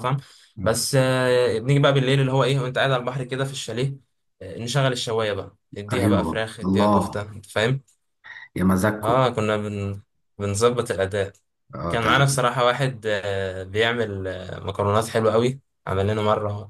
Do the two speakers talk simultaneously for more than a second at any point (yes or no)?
yes